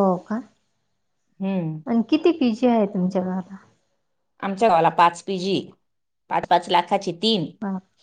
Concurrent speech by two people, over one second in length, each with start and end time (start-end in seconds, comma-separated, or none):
none